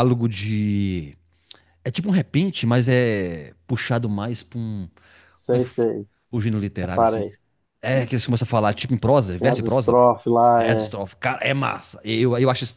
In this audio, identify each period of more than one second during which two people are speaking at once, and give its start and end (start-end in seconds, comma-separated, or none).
none